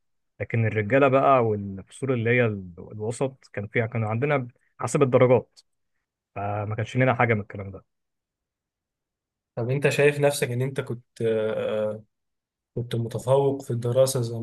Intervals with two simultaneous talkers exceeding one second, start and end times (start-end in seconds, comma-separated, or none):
none